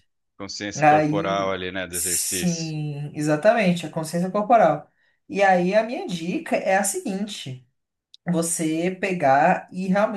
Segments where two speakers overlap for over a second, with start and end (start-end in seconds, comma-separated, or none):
0.7-2.8